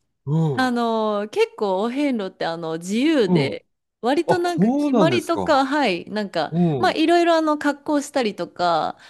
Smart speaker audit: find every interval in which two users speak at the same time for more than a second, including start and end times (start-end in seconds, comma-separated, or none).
4.3-5.6